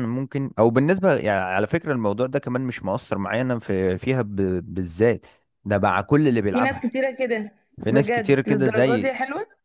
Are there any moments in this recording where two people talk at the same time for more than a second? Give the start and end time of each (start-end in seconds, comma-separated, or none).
7.9-9.1